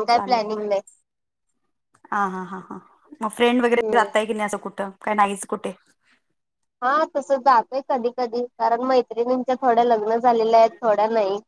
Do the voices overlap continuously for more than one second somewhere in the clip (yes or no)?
no